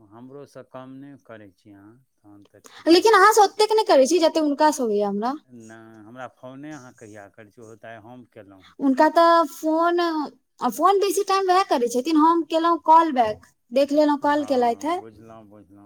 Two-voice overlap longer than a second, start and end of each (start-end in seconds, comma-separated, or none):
none